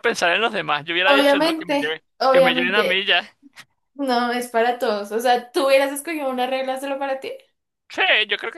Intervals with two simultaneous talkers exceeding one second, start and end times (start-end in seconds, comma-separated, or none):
1.0-3.0